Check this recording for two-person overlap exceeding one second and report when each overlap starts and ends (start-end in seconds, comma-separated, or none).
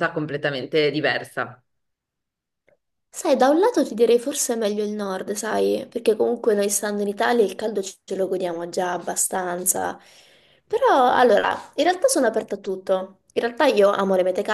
none